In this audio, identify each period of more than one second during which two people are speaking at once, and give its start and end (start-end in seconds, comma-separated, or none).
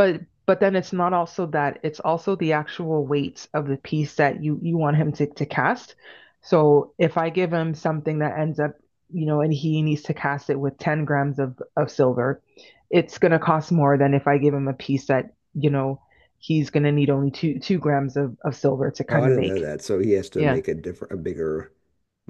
none